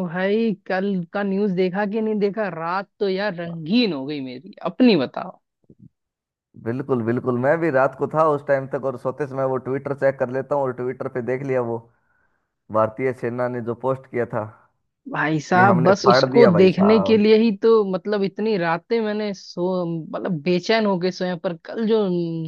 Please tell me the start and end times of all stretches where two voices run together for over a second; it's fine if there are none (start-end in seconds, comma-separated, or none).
15.5-17.2